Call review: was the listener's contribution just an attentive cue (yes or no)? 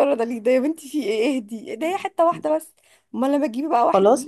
no